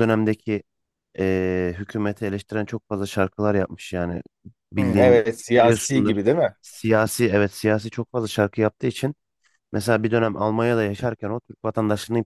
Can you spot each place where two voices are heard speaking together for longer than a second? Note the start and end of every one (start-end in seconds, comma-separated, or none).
4.8-6.1